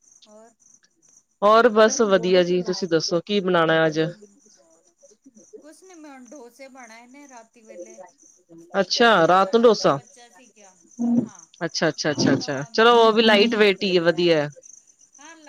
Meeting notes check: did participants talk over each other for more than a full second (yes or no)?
yes